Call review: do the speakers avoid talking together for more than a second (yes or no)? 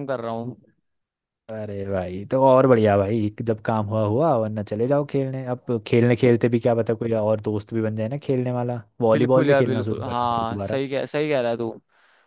no